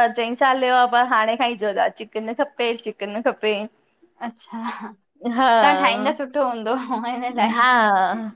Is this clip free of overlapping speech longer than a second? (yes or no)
yes